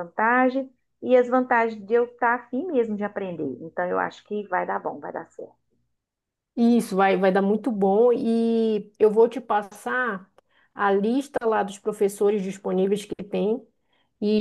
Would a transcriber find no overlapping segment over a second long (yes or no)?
yes